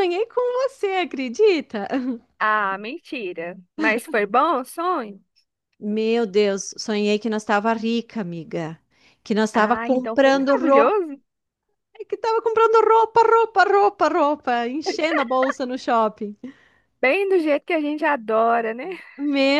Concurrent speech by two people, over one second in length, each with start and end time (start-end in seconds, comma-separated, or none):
9.5-10.9